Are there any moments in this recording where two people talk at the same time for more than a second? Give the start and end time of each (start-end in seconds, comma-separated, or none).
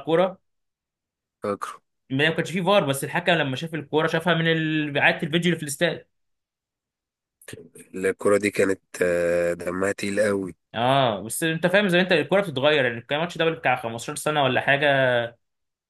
none